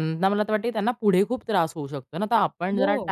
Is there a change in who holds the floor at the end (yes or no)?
no